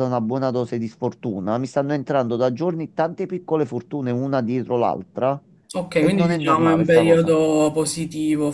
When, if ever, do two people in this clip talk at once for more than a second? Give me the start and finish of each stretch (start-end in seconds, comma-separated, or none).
5.9-7.3